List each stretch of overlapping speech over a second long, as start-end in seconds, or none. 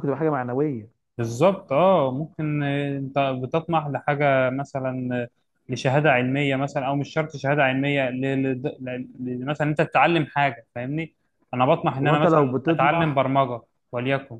12.0-13.2